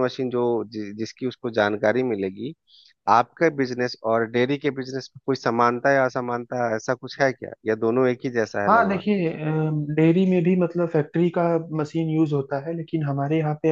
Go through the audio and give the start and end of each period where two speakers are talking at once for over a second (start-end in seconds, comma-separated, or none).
none